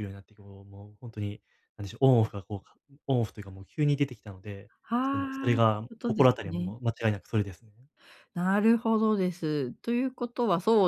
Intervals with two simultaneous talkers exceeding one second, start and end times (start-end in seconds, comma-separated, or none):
4.8-6.8